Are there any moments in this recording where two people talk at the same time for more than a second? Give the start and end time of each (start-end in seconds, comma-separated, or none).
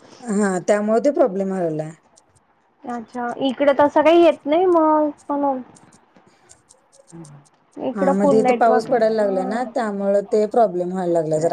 8.0-9.7